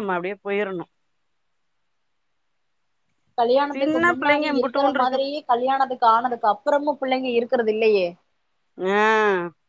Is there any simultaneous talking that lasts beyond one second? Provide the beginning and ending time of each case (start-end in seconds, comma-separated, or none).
3.7-5.3